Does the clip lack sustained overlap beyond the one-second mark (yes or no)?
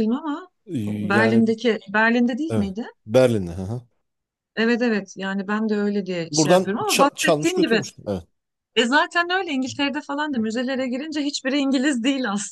no